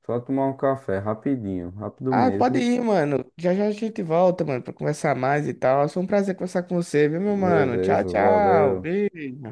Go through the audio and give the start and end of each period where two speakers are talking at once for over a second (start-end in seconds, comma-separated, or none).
7.2-8.9